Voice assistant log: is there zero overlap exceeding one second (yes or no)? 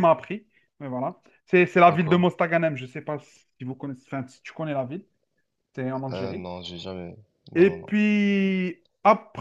yes